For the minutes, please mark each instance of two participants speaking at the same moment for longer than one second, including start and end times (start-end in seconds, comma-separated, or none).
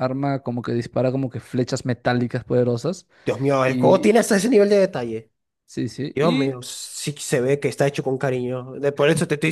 none